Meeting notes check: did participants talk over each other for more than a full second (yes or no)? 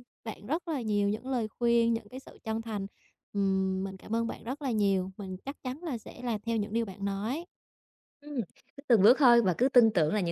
no